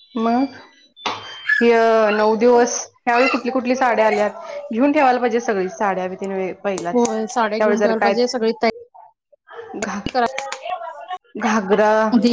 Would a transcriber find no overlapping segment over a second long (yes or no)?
no